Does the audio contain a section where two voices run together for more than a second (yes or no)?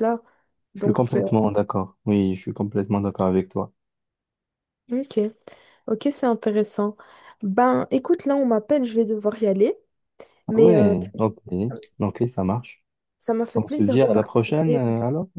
yes